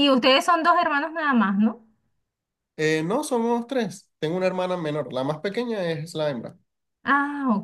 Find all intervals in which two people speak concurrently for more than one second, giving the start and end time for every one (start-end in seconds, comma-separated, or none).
none